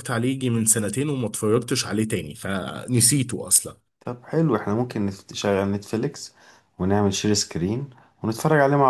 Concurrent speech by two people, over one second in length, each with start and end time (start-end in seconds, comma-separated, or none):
none